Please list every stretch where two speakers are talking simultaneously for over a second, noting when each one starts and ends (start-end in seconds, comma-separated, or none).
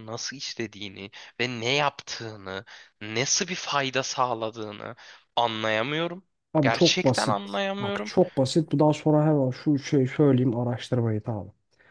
6.5-8.1